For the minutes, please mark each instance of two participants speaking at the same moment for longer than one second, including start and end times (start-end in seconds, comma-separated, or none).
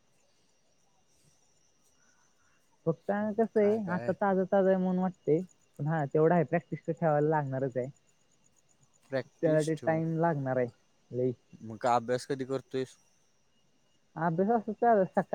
none